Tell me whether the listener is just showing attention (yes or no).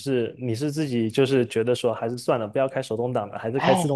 no